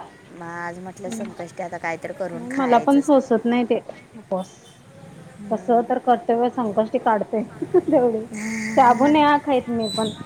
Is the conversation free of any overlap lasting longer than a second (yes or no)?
no